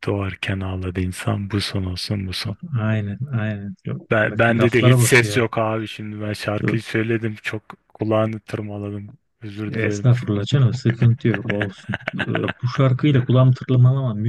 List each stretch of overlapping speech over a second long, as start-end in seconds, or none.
4.1-5.5